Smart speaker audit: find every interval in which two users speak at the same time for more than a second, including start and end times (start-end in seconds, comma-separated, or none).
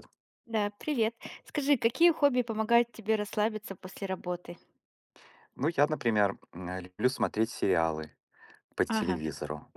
none